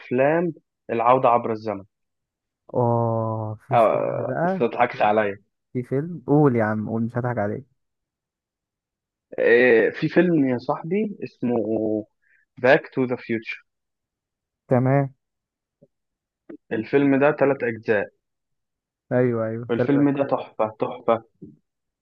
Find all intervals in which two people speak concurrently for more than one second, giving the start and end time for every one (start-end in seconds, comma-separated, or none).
3.7-5.1